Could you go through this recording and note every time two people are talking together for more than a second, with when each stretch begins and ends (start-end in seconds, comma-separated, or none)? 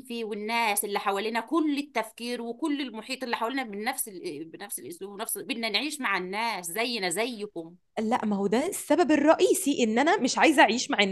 none